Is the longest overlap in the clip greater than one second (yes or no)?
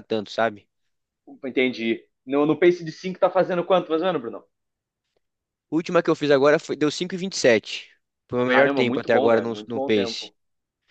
yes